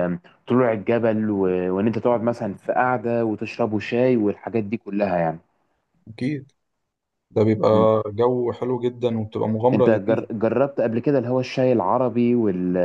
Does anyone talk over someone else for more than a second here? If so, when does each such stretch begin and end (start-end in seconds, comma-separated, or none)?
none